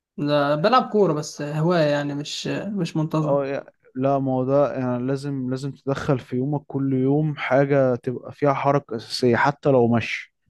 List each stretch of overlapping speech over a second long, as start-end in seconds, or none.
none